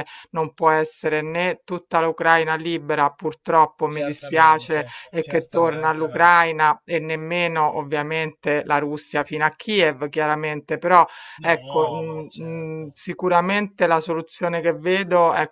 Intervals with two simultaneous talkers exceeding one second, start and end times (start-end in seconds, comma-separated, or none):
3.9-6.3, 11.4-13.0